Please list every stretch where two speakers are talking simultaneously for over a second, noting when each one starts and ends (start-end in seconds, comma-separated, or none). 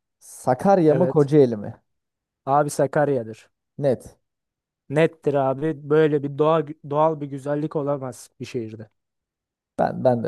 none